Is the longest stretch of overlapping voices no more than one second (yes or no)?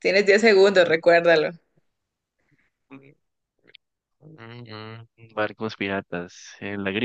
yes